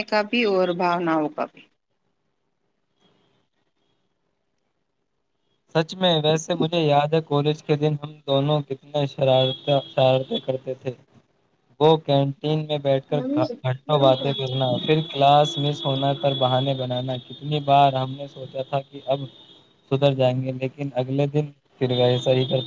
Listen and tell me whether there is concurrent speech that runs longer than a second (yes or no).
no